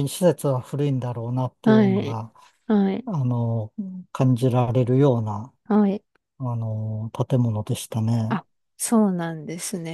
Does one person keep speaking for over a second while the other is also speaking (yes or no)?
no